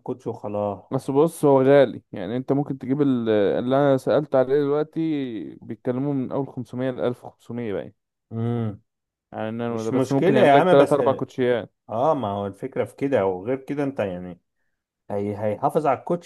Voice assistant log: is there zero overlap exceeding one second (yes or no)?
no